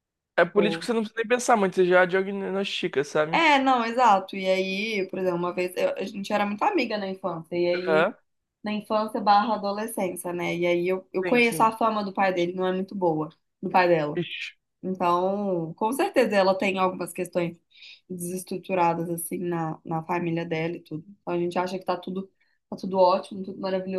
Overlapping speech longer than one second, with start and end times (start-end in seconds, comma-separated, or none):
none